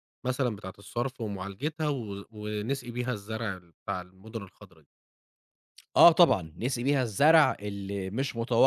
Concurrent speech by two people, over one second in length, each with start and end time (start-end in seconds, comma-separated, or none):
none